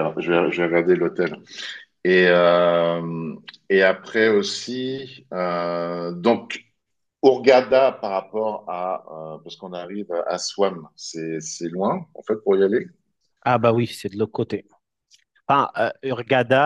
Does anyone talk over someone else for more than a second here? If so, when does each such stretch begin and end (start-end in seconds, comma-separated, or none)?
none